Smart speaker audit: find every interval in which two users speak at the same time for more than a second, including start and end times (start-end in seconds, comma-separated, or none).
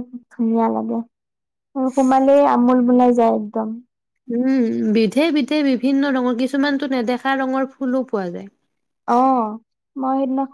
none